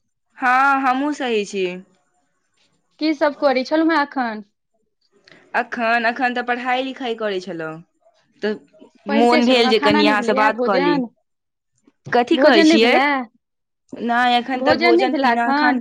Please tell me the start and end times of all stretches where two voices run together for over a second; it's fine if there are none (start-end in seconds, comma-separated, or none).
9.2-11.0